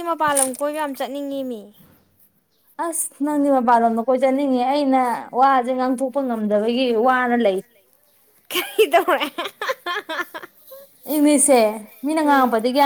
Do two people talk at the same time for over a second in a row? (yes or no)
no